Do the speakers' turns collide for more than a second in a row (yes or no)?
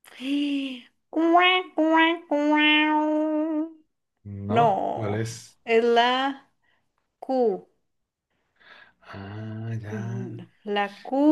no